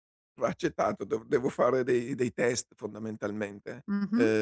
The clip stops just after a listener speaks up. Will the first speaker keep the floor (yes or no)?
no